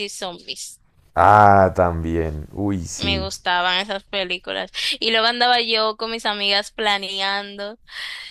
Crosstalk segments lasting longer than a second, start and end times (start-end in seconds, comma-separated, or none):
none